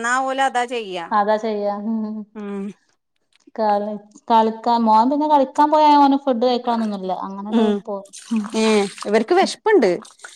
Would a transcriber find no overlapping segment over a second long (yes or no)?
yes